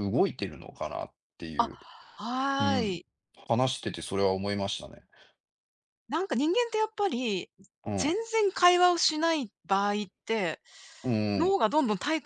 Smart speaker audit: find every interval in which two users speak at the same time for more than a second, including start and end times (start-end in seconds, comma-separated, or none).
none